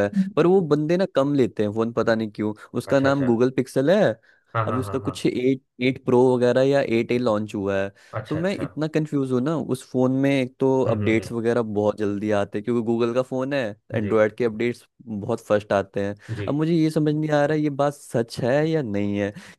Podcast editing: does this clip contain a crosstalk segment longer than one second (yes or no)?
no